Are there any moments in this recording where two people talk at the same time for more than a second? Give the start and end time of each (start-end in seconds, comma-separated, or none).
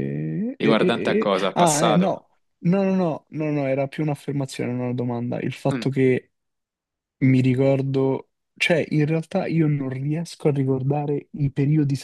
0.5-2.2